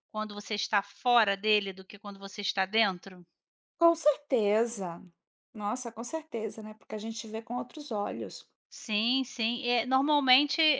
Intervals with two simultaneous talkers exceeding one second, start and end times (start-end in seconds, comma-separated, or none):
none